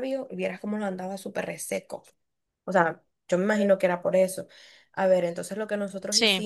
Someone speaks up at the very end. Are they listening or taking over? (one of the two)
listening